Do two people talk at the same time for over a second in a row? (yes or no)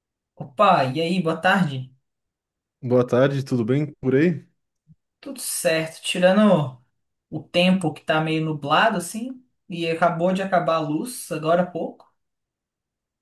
no